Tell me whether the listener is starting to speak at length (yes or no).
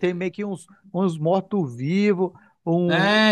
yes